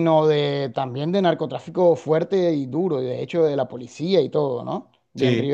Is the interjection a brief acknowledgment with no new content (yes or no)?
yes